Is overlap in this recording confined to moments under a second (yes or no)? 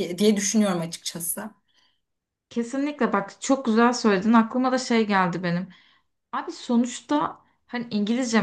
yes